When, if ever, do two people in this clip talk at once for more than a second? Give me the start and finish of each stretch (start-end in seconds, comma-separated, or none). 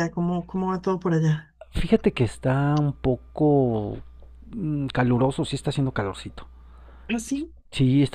none